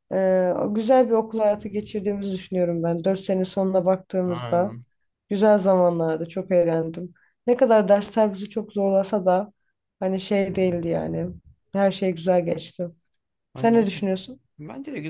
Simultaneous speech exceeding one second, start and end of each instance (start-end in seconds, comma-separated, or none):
none